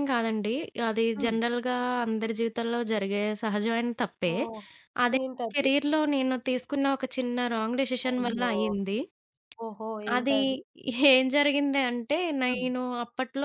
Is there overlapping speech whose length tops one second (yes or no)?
no